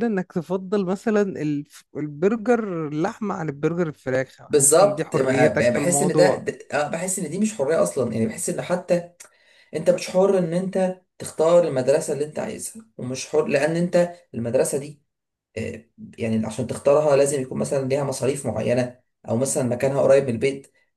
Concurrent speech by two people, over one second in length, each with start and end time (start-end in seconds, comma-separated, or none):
4.5-6.5